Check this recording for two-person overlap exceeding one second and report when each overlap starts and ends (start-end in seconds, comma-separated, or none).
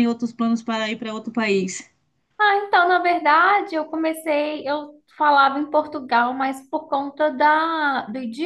none